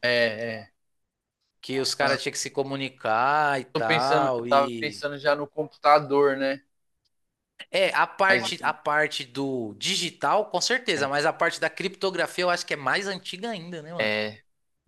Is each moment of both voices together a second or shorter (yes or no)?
no